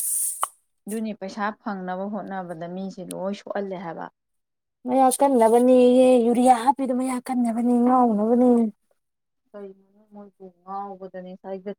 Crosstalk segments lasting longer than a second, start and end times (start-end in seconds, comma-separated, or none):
none